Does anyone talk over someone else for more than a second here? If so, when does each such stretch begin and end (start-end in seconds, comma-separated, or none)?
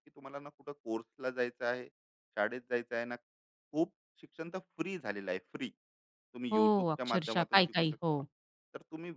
6.5-8.2